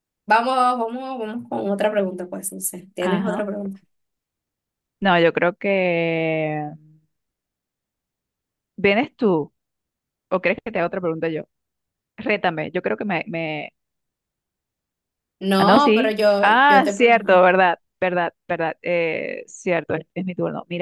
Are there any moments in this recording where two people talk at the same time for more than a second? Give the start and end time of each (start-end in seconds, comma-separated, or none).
15.6-17.4